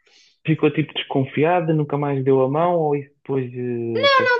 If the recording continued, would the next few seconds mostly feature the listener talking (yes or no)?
yes